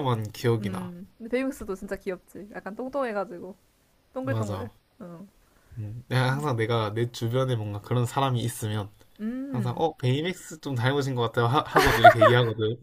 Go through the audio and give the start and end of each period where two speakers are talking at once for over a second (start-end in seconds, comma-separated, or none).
none